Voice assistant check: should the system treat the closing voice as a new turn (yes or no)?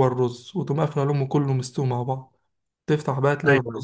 no